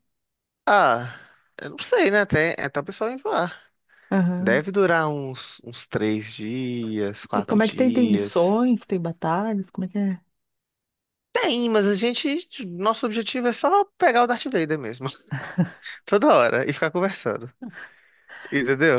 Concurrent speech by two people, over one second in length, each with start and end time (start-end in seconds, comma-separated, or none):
7.3-8.5